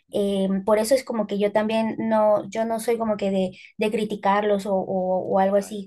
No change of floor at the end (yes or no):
yes